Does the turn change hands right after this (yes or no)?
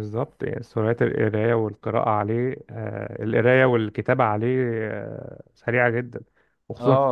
yes